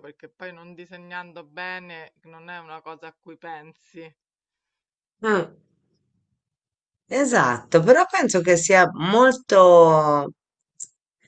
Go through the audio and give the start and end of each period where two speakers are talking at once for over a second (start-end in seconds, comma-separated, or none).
none